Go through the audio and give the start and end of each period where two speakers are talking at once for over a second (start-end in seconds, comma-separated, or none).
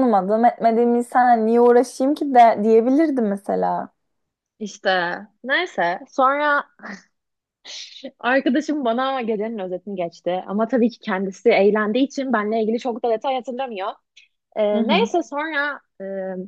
none